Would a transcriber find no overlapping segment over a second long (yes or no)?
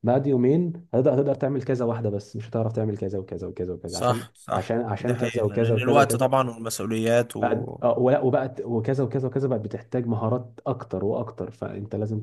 no